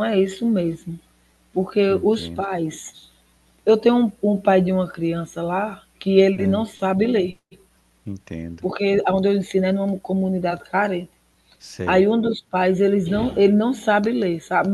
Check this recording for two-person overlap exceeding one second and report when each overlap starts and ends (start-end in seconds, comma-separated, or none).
none